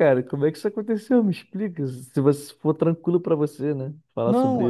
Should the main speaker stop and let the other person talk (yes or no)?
yes